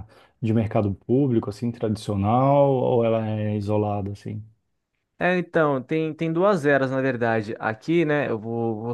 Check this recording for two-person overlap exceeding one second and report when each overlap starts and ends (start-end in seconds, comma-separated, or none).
none